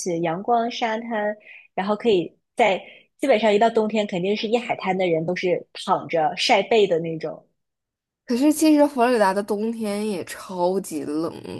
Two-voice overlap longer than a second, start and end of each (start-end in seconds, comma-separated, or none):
none